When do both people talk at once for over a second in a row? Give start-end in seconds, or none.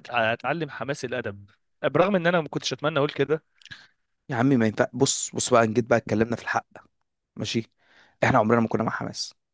none